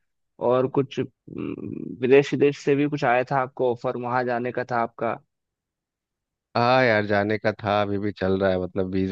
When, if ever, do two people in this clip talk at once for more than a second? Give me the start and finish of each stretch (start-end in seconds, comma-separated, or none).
none